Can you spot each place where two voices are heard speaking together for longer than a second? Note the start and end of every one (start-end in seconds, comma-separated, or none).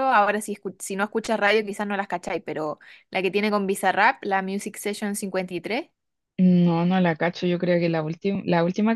none